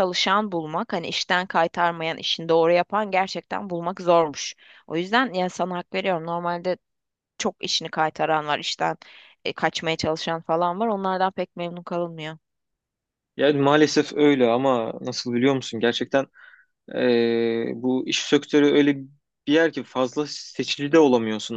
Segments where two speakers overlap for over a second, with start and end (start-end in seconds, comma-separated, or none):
none